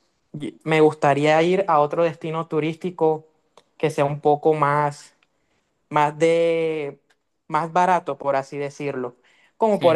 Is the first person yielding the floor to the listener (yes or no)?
no